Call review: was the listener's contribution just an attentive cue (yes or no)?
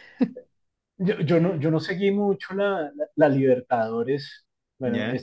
yes